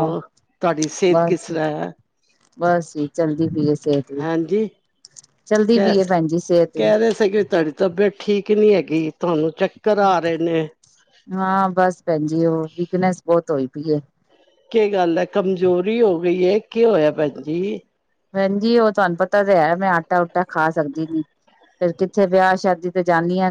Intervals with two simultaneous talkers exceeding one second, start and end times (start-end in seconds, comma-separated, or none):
none